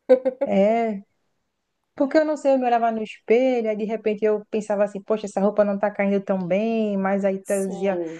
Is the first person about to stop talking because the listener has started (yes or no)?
no